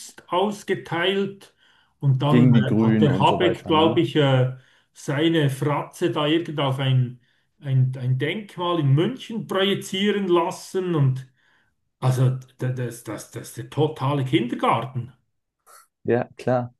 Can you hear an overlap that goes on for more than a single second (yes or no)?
yes